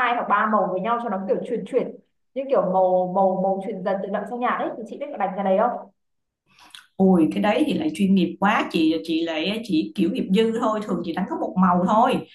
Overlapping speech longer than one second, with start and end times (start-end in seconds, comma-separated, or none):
none